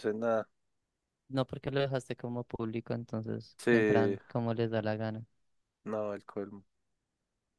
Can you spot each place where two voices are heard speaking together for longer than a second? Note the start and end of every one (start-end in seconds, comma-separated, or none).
none